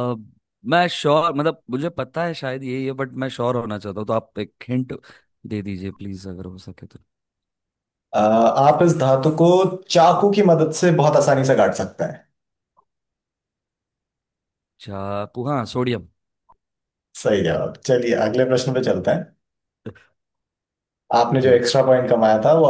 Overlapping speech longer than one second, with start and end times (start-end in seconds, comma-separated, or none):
none